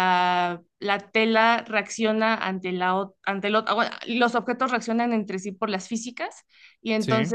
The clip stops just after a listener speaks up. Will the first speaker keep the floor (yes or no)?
yes